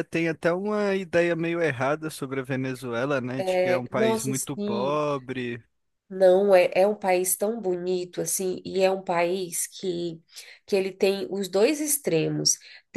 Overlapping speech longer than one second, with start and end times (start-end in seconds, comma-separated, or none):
3.4-5.0